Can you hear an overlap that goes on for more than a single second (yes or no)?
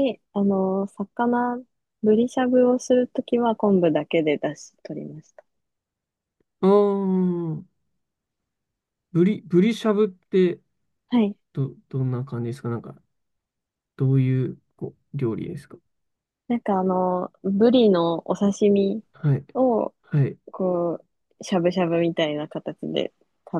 no